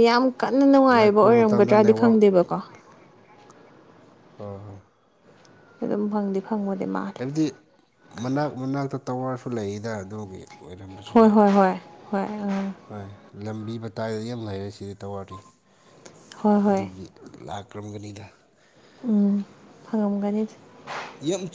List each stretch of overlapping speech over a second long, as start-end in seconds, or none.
1.0-2.2